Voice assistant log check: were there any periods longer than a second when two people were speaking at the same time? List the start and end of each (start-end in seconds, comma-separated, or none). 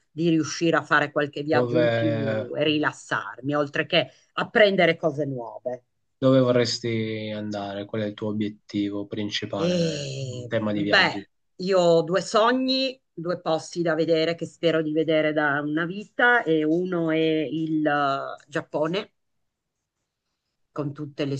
9.6-11.2